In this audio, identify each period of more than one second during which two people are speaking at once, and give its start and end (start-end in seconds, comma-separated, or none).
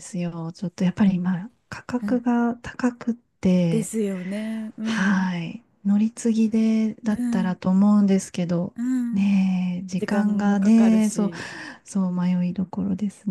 10.0-11.3